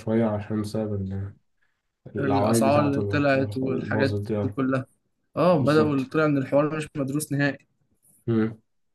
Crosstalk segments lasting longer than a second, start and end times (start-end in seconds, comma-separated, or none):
2.2-4.6